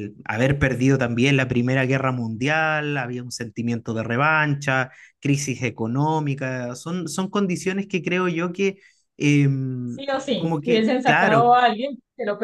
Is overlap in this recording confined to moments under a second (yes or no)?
no